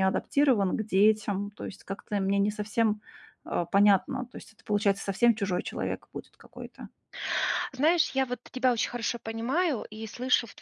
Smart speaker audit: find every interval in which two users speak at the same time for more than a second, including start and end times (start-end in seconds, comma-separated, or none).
none